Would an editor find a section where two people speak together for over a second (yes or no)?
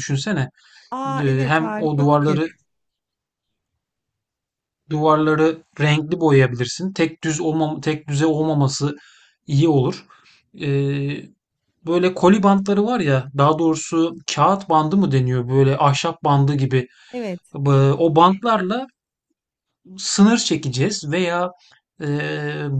yes